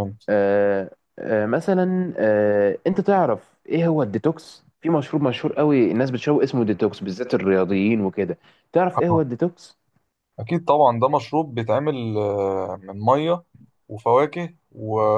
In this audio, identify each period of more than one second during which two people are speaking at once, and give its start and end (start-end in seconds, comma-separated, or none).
none